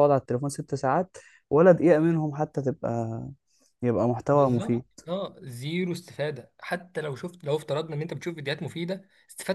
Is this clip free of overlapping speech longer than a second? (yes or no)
yes